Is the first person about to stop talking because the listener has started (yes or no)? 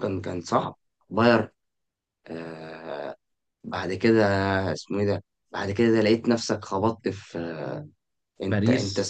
no